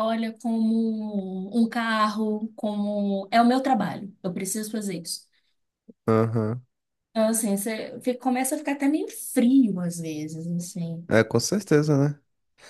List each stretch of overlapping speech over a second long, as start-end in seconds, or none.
none